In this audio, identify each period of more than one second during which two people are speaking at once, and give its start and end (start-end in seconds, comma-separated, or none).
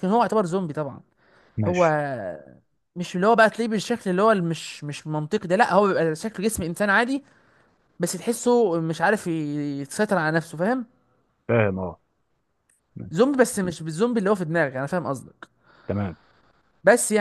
none